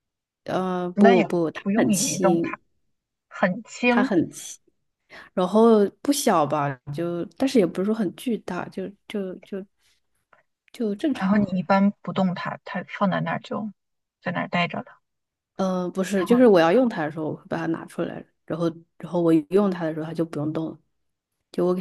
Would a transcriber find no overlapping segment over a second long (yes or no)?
no